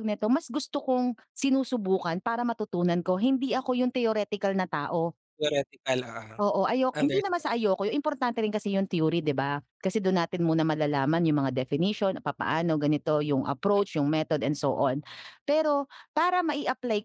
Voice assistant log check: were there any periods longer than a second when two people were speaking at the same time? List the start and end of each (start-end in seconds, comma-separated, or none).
none